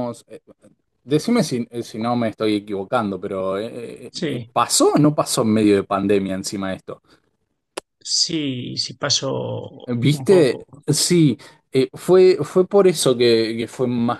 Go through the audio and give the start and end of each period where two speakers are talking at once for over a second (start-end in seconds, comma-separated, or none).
none